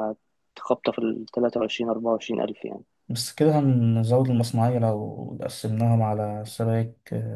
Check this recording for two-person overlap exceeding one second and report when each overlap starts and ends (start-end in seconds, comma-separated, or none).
none